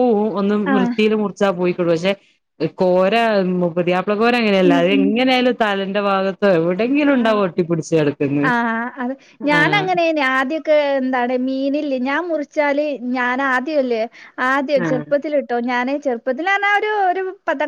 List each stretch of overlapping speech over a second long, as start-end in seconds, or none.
none